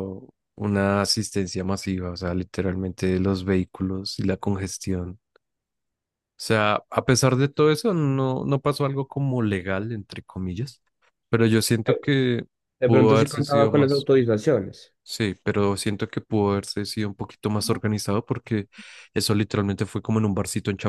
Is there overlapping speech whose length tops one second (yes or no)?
yes